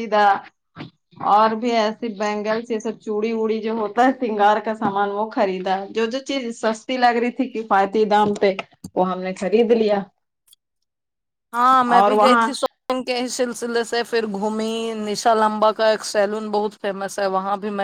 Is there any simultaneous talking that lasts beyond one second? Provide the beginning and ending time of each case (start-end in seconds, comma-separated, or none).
none